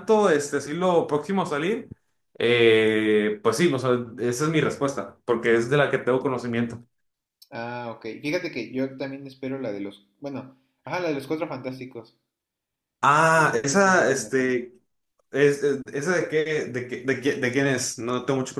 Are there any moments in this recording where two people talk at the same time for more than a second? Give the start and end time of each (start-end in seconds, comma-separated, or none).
13.3-14.6